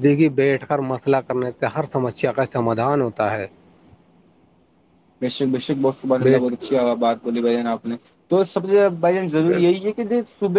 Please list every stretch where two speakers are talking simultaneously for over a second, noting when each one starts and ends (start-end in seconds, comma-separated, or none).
none